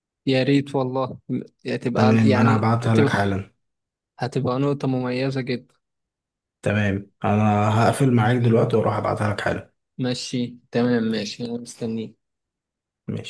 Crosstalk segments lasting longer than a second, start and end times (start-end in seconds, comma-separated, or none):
2.0-3.2